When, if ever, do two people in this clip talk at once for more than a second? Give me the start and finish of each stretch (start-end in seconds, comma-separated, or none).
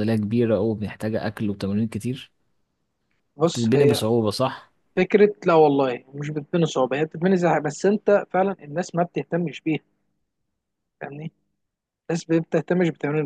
none